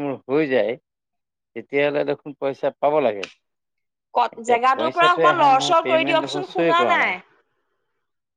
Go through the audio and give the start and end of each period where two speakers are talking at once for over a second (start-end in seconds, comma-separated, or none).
4.4-6.8